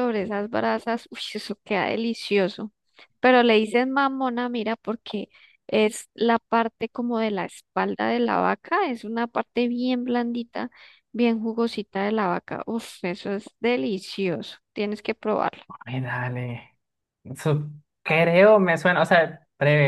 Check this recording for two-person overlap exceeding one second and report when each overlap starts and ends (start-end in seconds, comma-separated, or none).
none